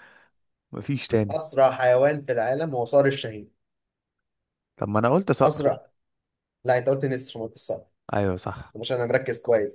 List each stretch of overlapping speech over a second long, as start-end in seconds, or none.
none